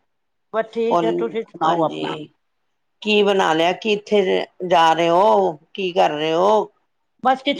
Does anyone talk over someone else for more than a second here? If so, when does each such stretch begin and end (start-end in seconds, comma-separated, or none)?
0.9-2.1